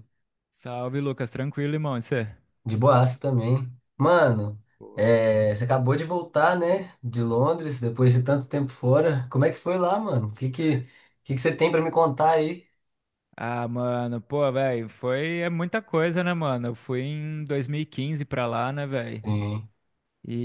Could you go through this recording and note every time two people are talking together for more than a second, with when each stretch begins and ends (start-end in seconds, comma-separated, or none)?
none